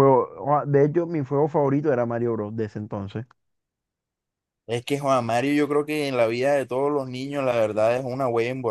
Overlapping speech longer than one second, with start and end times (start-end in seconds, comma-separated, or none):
none